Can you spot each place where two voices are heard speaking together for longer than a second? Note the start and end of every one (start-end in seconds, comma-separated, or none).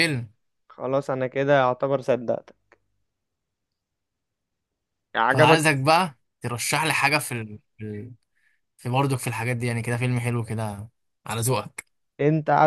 none